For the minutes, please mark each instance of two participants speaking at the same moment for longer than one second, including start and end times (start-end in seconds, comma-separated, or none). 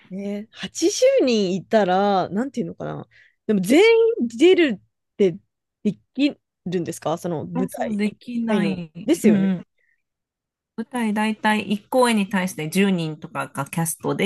7.5-9.5